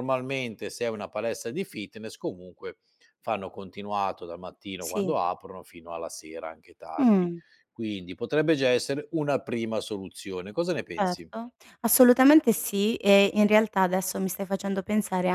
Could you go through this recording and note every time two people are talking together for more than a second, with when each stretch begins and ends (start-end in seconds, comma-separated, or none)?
none